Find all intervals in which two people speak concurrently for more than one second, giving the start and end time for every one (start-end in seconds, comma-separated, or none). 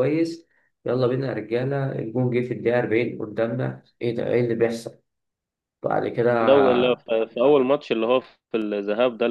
none